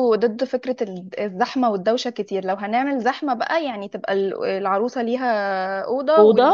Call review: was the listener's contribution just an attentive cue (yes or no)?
yes